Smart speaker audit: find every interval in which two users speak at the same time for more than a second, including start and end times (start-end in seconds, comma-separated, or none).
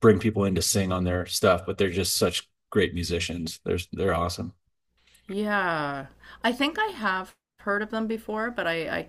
none